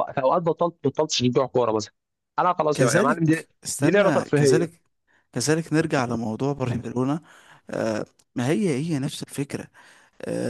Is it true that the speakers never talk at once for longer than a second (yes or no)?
no